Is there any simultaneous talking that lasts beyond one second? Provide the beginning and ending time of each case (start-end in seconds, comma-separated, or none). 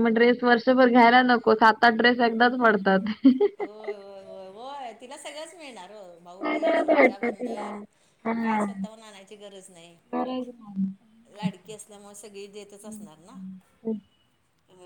6.4-7.7